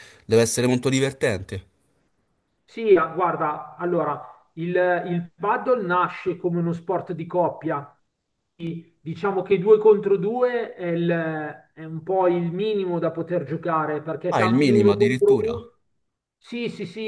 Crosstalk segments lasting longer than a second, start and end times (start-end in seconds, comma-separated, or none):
14.3-15.5